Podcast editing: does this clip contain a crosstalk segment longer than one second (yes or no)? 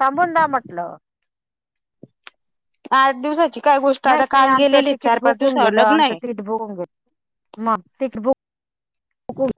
yes